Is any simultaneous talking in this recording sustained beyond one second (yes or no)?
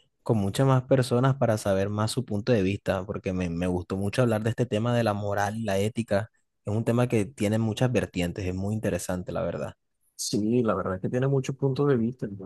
no